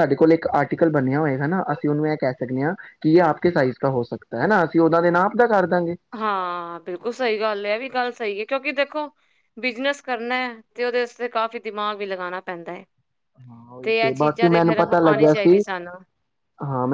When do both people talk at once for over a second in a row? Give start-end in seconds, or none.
14.1-15.6